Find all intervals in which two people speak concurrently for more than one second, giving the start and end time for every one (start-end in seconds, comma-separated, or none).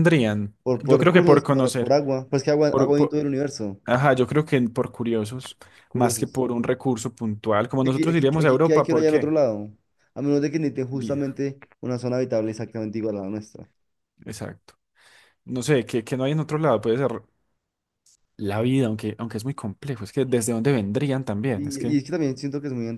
0.6-2.0, 7.8-9.3